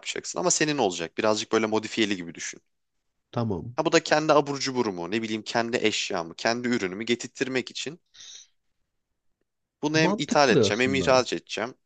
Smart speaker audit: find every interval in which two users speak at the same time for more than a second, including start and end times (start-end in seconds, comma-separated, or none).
9.9-11.2